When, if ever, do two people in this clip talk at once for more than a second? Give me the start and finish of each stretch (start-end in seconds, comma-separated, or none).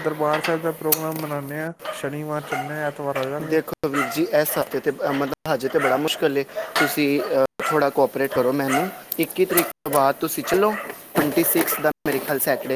none